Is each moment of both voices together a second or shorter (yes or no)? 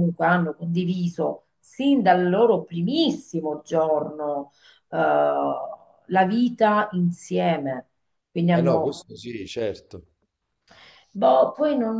yes